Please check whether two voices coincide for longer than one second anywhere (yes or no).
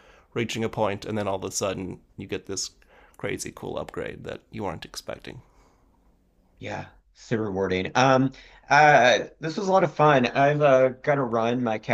no